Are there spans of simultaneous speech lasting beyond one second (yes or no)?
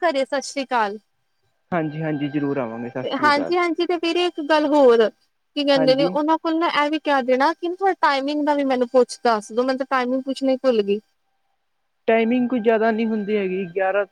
no